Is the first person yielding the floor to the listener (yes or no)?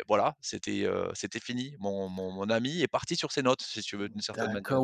yes